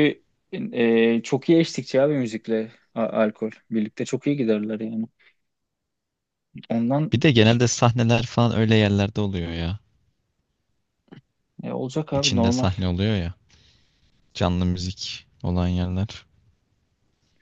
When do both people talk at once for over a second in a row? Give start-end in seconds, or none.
none